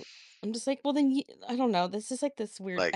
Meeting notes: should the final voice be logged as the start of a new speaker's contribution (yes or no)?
no